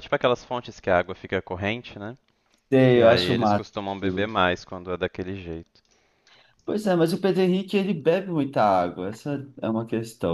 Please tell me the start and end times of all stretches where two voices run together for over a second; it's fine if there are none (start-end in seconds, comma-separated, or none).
2.9-4.3